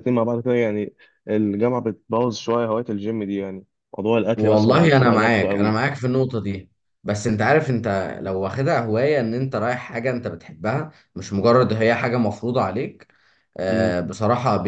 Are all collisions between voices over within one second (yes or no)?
no